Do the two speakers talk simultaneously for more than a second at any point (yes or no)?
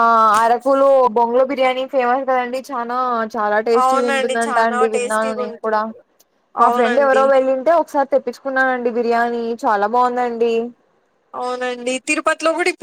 yes